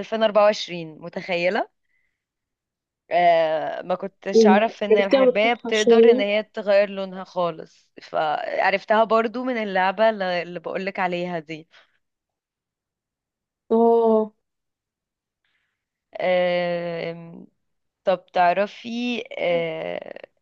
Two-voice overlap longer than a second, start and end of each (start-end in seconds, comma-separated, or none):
4.3-6.2